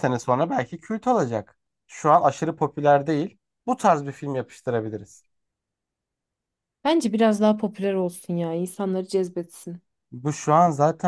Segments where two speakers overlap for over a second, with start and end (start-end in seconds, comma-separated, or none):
none